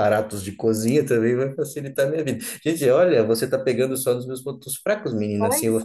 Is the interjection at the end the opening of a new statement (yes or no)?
no